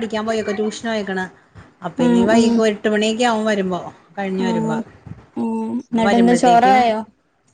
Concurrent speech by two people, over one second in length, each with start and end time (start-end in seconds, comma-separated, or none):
5.4-6.8